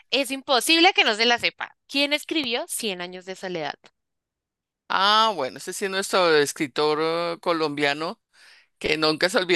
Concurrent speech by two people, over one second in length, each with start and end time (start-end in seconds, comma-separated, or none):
none